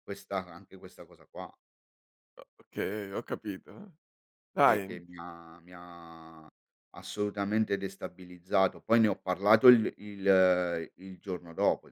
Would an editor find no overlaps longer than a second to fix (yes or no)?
yes